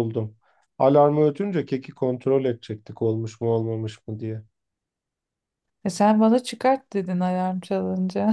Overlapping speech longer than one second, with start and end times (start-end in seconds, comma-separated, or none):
none